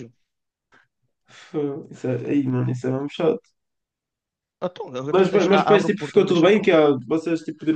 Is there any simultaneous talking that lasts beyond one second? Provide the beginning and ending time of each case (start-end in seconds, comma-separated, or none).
5.1-6.7